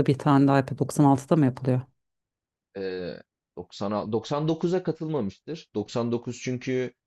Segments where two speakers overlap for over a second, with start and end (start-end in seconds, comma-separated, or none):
none